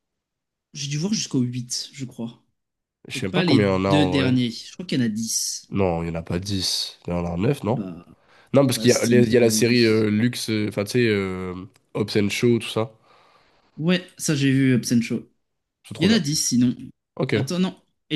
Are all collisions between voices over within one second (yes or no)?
no